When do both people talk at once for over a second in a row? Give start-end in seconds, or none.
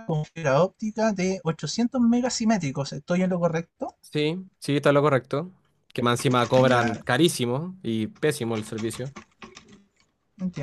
none